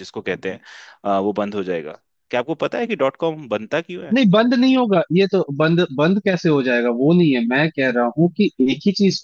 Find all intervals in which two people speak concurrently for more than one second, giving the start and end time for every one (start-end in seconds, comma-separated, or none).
none